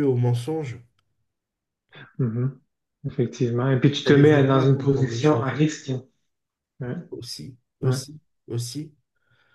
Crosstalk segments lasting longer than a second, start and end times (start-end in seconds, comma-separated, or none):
4.0-5.5